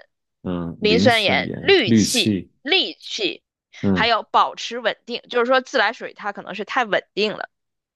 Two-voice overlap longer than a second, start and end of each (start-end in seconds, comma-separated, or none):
0.8-2.5